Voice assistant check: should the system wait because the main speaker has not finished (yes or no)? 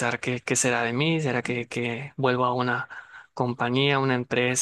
yes